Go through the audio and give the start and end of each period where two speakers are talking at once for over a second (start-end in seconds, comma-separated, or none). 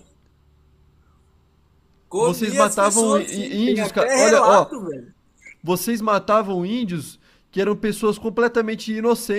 2.2-4.7